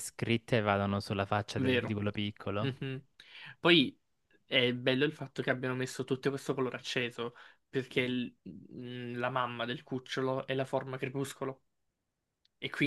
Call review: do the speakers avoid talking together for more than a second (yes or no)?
yes